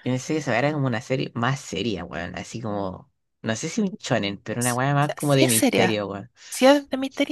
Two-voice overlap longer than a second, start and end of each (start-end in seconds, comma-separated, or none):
4.6-6.0